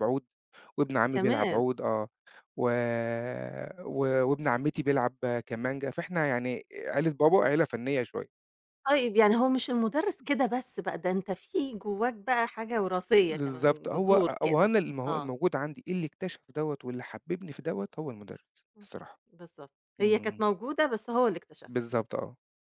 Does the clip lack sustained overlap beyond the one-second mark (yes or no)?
no